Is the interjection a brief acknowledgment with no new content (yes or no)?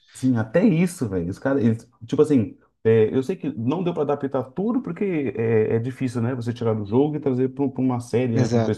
no